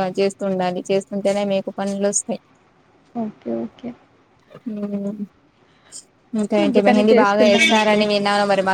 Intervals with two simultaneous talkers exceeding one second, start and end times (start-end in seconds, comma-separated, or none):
6.7-8.0